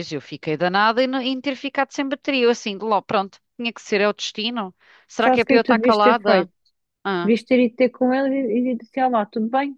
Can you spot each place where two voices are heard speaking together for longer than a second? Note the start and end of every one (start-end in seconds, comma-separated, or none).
5.2-6.5